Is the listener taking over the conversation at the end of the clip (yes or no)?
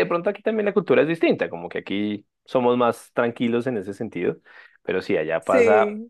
no